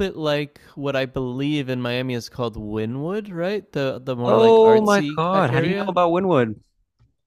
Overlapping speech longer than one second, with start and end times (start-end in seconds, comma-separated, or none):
4.2-5.9